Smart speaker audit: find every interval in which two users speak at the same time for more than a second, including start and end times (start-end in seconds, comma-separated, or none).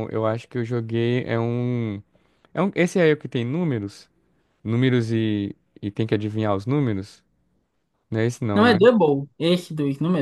none